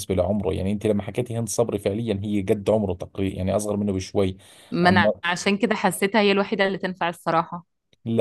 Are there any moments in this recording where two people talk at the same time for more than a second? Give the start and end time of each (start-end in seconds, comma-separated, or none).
none